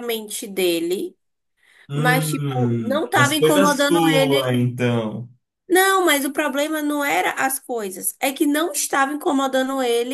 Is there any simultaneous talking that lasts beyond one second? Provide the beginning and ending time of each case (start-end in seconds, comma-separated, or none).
1.9-4.5